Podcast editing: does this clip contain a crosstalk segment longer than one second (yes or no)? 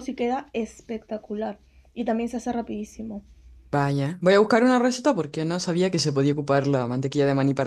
no